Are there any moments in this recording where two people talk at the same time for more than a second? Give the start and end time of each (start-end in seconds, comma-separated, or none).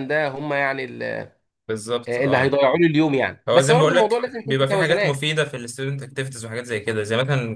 3.5-5.3